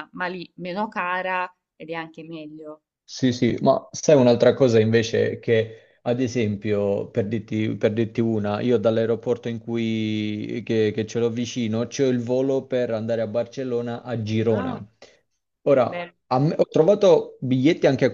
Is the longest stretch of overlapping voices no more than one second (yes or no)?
yes